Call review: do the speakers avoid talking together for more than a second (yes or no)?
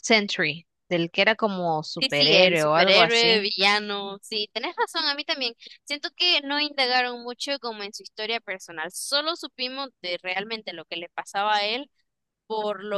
no